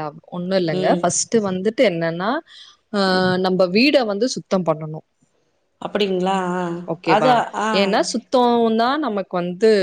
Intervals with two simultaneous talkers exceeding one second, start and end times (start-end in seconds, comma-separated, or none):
none